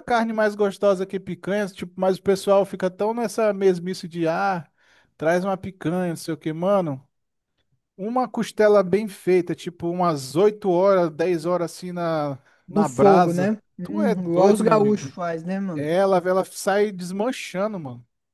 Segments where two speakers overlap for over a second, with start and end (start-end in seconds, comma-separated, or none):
12.7-15.1